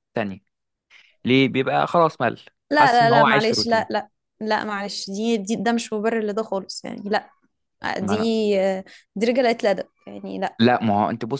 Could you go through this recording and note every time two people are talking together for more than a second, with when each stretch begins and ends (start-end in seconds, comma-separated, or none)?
2.7-4.0